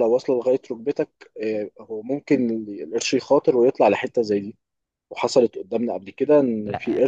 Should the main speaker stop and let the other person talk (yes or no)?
no